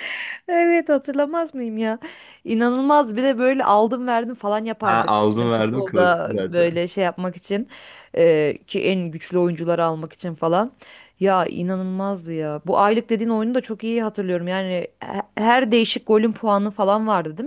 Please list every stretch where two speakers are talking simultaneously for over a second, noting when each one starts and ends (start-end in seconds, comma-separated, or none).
4.8-6.8